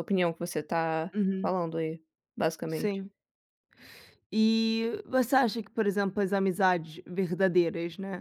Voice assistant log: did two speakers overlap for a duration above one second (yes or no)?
no